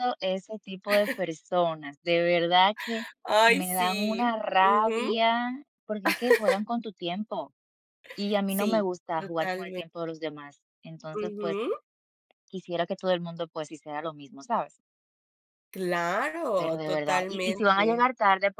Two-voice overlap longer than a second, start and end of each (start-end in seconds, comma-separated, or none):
3.5-5.1, 8.5-9.9, 16.6-18.1